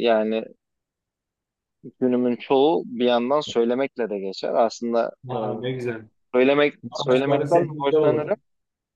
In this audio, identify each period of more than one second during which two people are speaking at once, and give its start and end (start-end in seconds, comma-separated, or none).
6.8-8.3